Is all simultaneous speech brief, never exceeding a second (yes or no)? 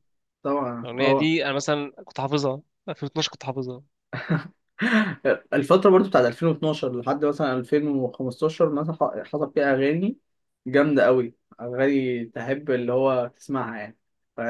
yes